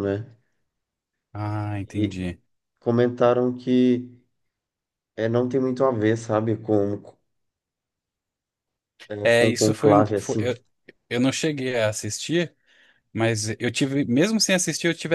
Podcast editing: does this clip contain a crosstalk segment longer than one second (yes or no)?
yes